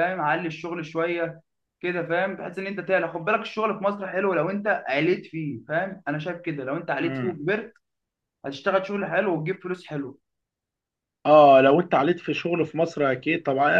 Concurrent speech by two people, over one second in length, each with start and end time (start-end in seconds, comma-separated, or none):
none